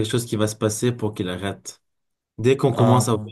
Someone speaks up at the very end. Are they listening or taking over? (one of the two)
listening